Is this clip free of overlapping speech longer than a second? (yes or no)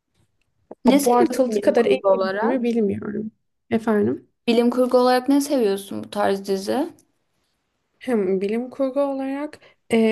no